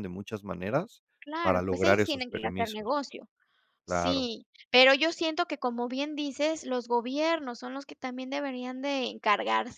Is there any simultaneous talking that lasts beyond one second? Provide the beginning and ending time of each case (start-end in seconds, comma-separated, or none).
1.4-3.0